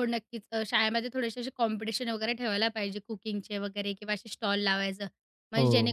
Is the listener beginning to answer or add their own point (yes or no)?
no